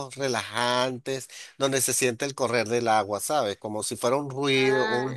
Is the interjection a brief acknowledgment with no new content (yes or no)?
yes